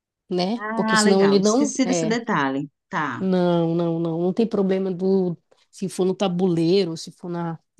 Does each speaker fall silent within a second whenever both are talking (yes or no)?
no